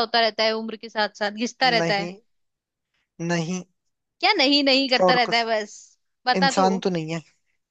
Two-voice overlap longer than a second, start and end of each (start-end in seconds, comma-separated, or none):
none